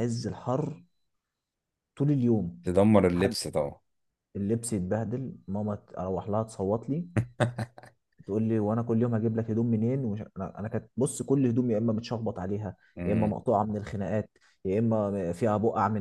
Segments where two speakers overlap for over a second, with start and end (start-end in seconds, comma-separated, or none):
none